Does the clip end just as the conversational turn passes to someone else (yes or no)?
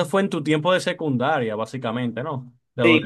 yes